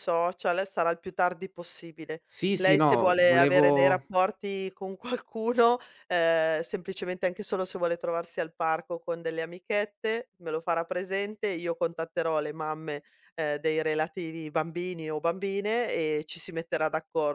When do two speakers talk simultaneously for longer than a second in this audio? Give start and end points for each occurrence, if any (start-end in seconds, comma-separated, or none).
2.2-4.0